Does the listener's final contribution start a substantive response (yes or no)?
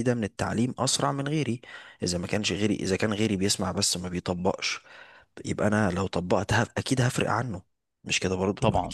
yes